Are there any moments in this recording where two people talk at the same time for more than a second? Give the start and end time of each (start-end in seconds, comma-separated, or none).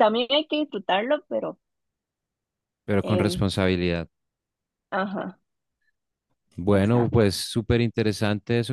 none